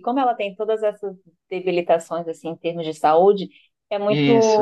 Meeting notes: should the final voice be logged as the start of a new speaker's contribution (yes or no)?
no